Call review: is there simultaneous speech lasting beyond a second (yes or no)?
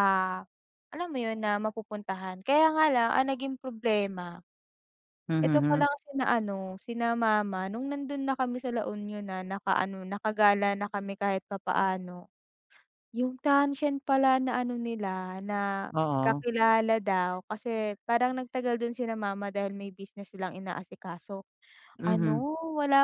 no